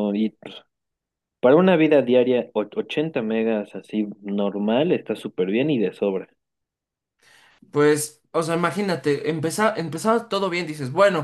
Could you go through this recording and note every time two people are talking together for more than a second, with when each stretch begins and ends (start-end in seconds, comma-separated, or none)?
none